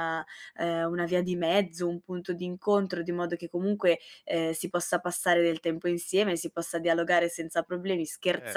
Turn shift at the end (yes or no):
no